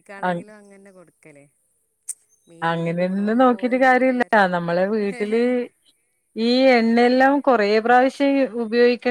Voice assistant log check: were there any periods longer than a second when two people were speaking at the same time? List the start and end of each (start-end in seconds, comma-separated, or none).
2.7-4.5